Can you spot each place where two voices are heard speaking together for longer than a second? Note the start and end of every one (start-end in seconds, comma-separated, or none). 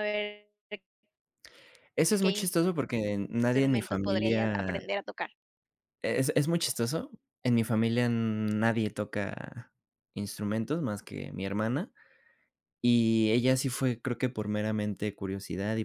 3.5-4.8